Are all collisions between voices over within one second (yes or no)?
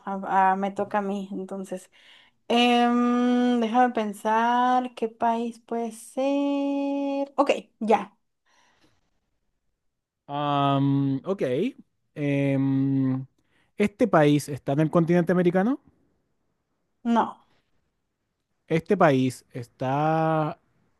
yes